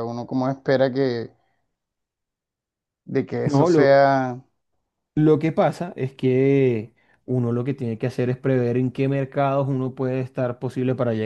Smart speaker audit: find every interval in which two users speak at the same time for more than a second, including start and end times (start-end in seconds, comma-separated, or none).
none